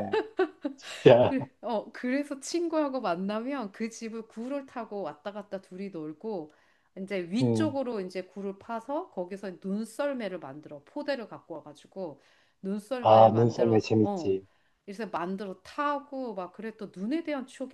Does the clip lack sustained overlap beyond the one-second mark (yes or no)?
no